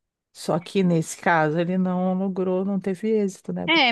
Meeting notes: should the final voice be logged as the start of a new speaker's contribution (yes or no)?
yes